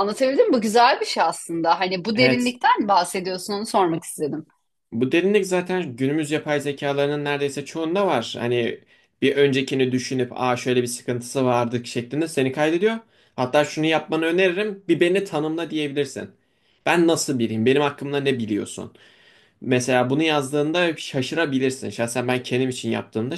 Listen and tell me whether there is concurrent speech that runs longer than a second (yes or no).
no